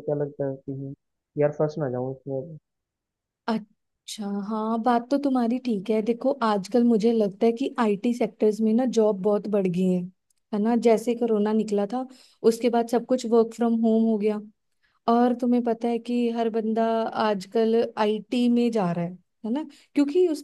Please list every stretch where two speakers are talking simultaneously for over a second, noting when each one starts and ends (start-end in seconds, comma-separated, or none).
none